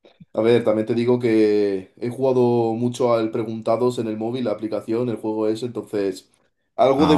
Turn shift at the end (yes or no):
yes